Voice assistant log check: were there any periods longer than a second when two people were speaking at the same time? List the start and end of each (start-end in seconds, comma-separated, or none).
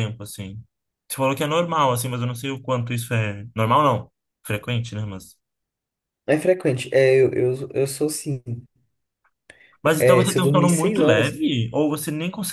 10.0-11.4